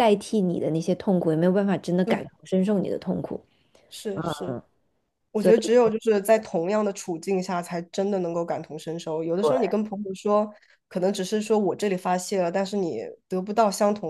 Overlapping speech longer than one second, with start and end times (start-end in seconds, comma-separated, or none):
none